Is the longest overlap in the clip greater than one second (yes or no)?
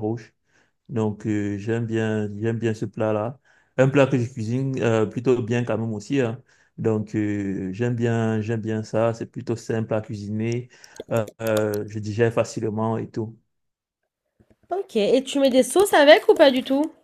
no